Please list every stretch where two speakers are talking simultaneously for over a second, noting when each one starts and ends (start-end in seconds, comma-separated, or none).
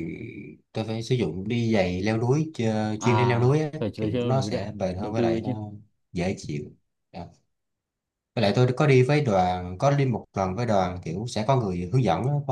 3.0-5.5